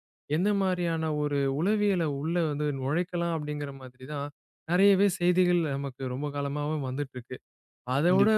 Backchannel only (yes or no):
yes